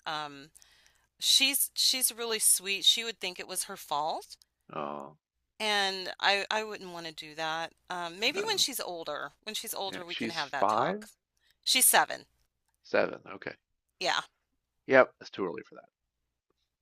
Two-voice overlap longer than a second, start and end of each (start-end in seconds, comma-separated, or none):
9.9-11.1